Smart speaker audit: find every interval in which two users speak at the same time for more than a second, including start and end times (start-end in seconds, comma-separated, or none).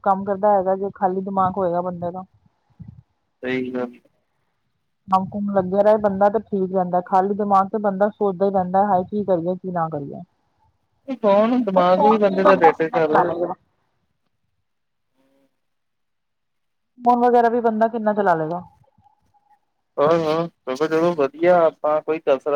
11.8-13.4